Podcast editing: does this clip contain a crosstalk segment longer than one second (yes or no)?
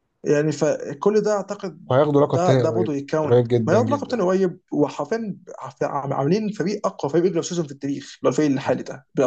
yes